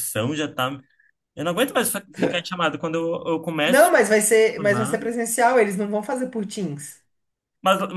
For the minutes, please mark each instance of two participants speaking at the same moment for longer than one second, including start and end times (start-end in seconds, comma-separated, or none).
none